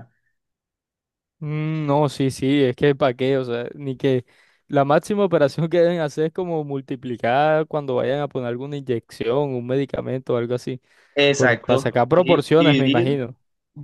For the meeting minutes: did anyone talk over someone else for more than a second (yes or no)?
yes